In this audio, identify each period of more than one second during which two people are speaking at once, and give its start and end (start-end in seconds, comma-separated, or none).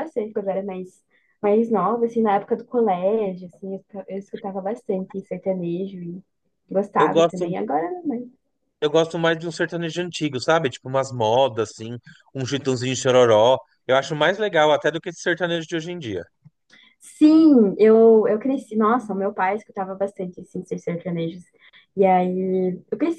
none